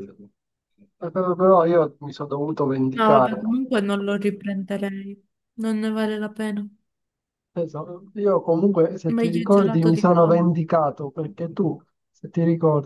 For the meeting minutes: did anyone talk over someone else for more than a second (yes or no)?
yes